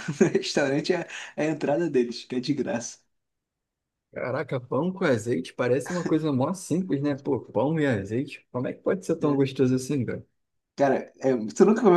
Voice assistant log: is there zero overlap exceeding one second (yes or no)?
yes